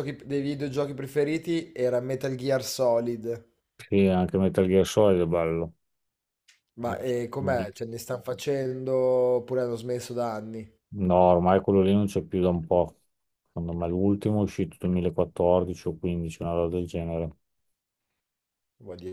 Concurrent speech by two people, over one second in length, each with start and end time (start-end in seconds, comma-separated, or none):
none